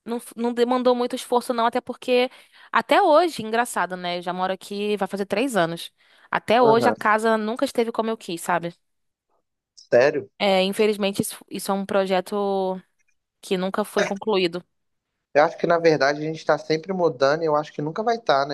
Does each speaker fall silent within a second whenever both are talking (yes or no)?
yes